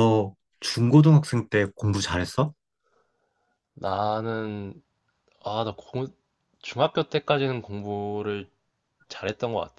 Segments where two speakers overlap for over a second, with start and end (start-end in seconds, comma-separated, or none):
none